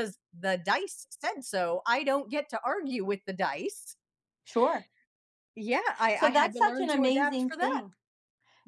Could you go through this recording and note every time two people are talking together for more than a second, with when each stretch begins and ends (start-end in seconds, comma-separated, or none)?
6.1-7.8